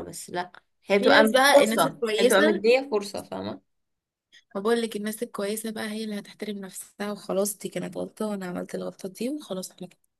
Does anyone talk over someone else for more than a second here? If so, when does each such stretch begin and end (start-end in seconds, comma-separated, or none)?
1.0-2.6